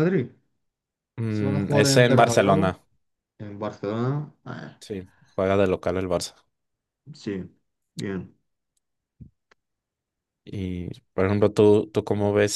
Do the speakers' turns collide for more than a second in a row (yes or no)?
yes